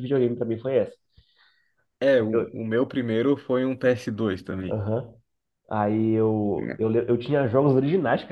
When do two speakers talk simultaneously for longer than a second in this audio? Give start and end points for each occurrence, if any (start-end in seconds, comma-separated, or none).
none